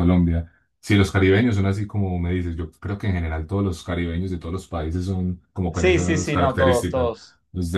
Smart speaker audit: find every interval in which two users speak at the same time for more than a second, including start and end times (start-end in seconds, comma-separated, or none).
5.7-7.1